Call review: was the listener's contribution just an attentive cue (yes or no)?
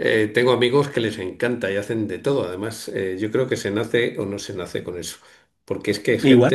yes